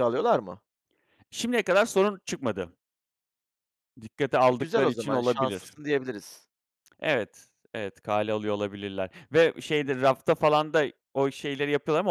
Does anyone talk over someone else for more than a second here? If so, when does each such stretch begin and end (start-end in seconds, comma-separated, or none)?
4.5-5.8